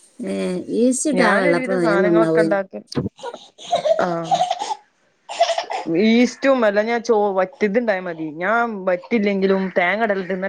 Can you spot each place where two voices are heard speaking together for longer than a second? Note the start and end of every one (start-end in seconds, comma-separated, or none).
1.2-2.6